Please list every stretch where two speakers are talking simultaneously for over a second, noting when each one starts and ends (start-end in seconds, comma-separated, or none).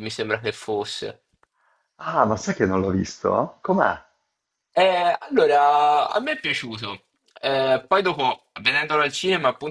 none